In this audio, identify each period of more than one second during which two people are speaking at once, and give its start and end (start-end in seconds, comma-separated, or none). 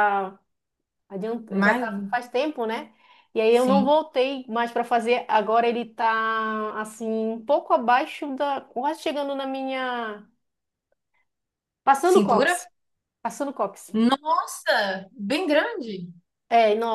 none